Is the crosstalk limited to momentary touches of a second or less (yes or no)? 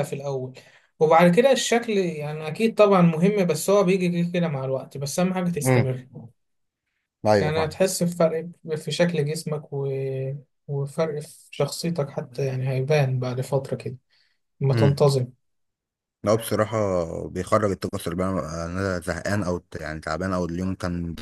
yes